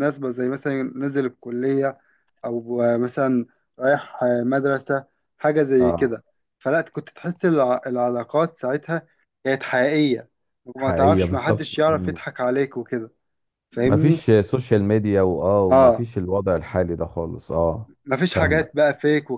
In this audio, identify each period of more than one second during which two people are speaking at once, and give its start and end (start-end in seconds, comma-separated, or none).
10.8-12.2